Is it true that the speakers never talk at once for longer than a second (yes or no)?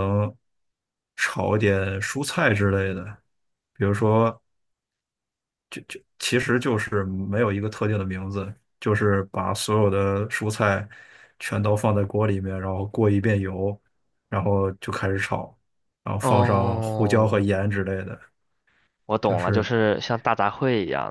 no